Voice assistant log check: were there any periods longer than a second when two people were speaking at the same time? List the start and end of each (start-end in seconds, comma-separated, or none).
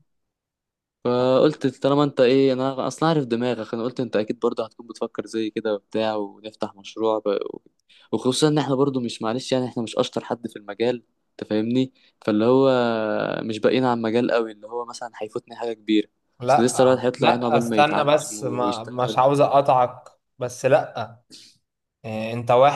16.5-19.6